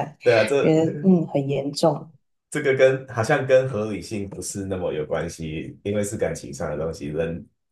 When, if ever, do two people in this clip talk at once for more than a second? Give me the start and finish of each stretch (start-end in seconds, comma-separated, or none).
none